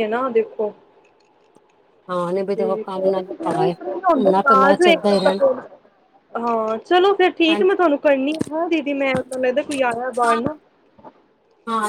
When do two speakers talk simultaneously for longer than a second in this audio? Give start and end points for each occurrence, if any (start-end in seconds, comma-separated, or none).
none